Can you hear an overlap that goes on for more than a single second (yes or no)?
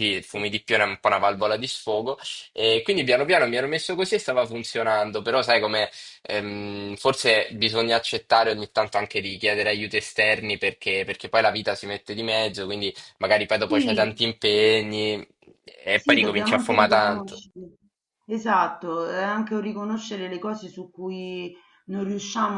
yes